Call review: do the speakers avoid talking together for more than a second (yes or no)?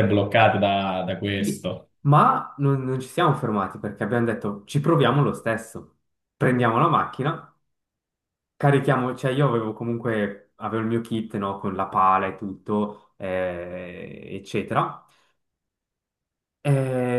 yes